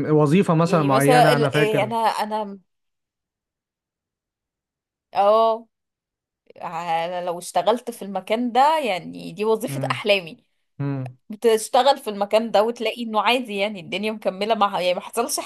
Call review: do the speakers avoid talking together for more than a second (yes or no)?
no